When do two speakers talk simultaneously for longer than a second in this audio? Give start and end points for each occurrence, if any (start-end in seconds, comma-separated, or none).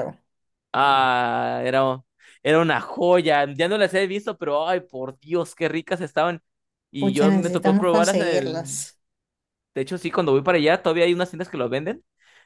7.0-8.7